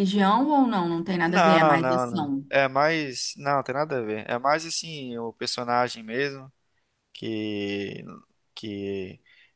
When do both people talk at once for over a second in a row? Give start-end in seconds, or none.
1.2-2.5